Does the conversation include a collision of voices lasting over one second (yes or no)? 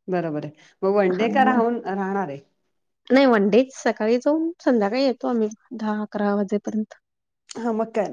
no